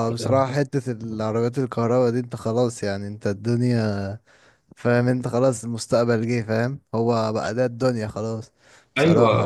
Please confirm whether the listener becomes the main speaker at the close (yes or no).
yes